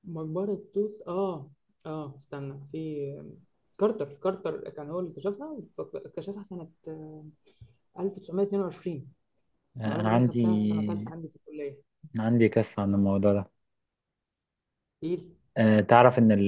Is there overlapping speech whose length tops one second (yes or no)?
no